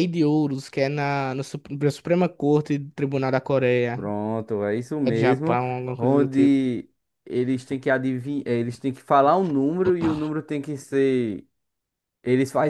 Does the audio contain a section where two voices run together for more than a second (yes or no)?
yes